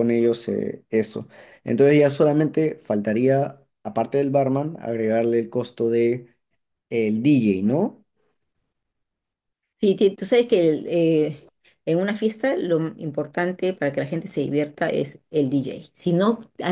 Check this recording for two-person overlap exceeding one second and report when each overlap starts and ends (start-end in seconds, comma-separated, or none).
none